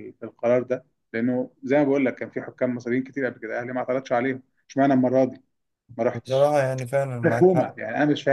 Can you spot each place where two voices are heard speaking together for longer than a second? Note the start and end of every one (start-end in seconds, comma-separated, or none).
none